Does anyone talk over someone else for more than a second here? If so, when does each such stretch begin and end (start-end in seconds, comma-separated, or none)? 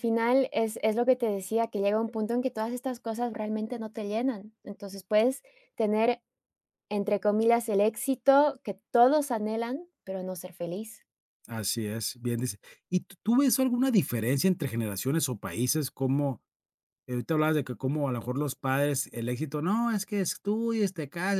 none